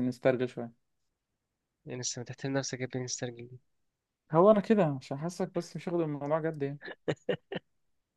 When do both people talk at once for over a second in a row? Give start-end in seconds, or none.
none